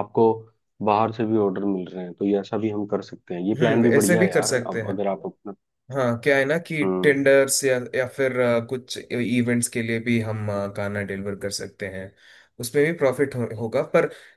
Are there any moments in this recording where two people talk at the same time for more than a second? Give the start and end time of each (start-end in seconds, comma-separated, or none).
3.6-5.0